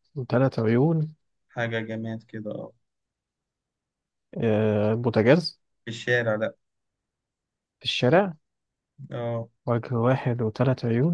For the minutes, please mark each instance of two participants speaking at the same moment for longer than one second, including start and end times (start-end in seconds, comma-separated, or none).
none